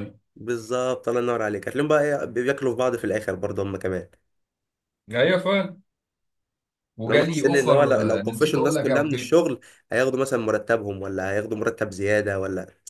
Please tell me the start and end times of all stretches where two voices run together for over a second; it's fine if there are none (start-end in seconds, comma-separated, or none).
7.1-9.4